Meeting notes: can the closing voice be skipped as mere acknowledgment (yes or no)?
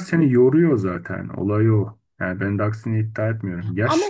yes